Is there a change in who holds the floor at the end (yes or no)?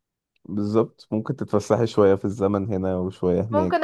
yes